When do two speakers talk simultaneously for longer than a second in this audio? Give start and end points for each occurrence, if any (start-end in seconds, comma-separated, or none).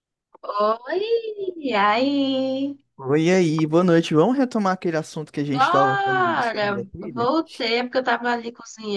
5.5-7.3